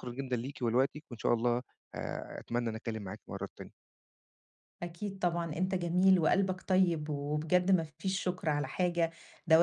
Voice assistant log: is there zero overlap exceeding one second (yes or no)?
yes